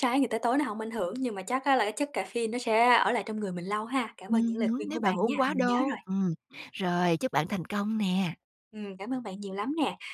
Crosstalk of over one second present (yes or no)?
yes